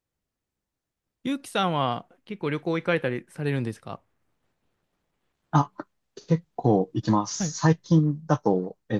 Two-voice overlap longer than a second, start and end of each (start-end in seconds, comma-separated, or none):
none